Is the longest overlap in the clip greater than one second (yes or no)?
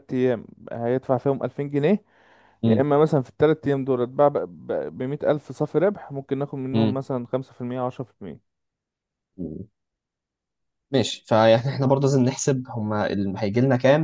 no